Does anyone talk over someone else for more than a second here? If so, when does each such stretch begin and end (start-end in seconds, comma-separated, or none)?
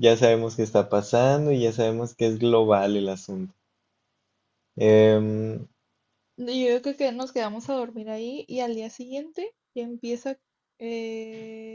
none